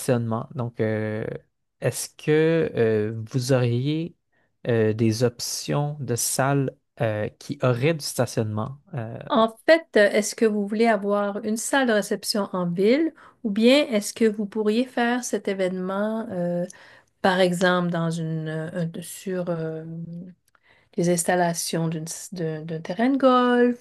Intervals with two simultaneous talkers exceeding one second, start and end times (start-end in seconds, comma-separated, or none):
none